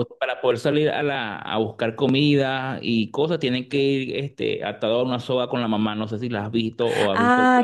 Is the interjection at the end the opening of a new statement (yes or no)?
yes